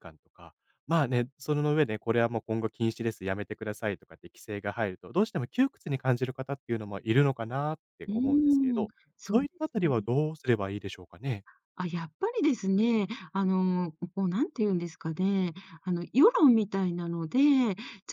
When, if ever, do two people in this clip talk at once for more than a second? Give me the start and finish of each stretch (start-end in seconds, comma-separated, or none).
8.1-9.9